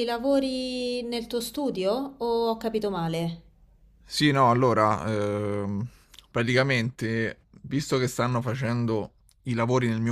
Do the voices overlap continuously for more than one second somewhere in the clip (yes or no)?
no